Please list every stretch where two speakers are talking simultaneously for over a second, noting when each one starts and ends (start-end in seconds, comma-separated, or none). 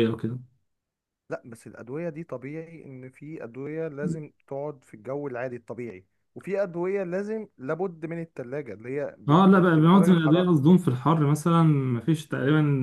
9.3-10.5